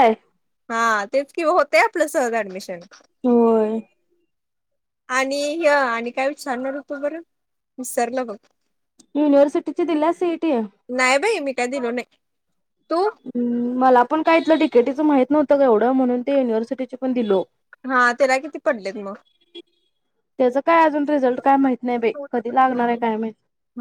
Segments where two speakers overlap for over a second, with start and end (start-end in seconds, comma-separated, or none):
none